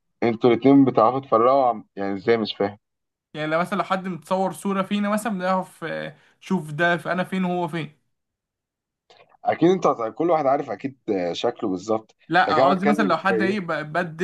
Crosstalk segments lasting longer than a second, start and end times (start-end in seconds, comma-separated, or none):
12.3-13.6